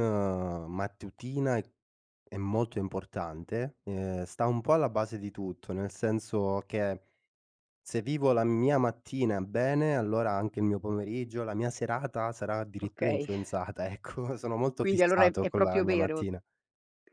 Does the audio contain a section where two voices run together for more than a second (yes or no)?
yes